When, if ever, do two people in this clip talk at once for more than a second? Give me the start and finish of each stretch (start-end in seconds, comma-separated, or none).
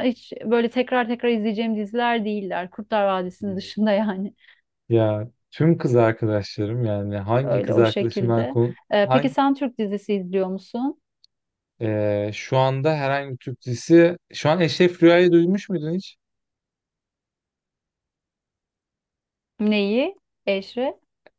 7.4-9.3